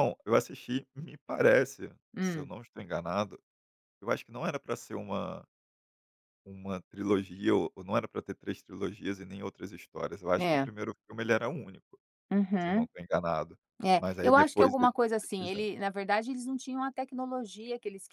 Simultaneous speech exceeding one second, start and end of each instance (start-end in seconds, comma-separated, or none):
14.0-15.7